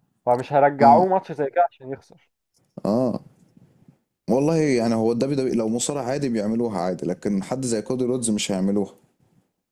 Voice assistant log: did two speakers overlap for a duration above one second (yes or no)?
no